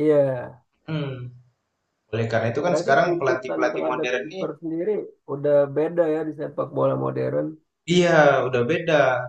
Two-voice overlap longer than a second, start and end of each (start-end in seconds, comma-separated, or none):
2.7-4.4